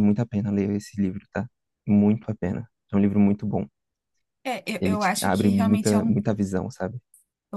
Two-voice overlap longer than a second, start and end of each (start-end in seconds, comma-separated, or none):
4.8-6.2